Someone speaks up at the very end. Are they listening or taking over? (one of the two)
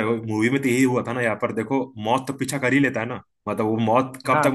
listening